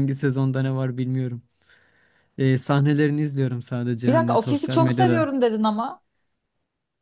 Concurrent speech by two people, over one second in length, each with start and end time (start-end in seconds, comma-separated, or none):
4.1-5.3